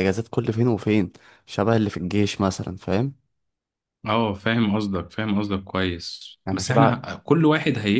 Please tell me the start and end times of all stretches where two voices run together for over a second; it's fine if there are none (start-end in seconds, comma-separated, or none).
none